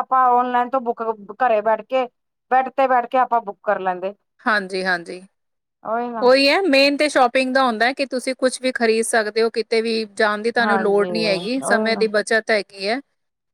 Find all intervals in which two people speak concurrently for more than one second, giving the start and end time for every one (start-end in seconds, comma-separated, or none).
10.6-12.0